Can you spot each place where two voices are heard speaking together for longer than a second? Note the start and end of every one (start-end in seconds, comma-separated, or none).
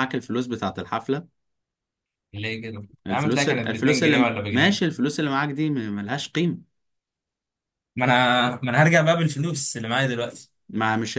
3.1-4.8